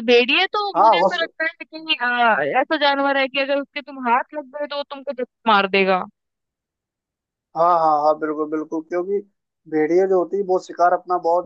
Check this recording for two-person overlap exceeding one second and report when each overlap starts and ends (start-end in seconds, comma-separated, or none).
none